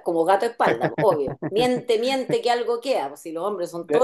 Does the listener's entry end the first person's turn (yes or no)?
no